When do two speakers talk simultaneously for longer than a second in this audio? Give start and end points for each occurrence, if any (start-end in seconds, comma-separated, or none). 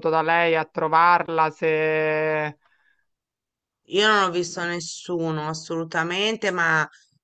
none